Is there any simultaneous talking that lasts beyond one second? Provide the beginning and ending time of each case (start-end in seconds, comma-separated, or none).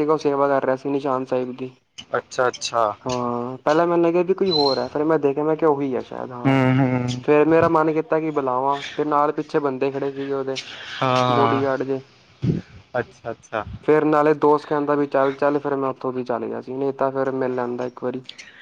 none